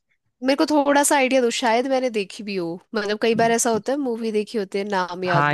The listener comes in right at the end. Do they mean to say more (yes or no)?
yes